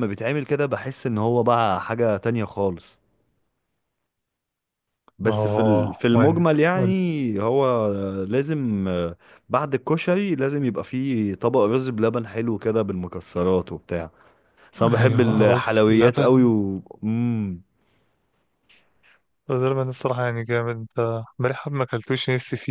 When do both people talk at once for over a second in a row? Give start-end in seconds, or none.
5.2-7.0, 14.9-16.3